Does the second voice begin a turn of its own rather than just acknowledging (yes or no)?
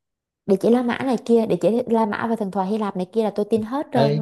yes